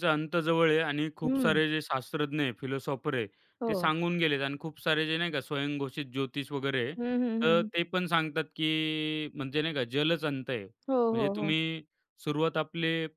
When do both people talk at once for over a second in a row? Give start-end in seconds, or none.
none